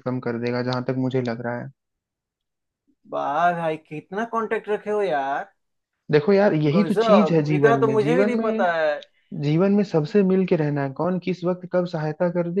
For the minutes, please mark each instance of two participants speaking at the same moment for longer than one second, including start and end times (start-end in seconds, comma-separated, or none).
6.8-8.7